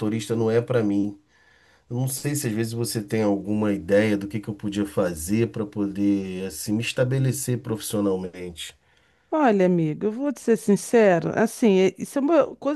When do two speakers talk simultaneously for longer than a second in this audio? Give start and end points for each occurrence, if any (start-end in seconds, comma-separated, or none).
none